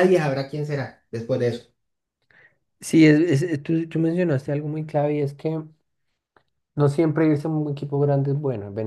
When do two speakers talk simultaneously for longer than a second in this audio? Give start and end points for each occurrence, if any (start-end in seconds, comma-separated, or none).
none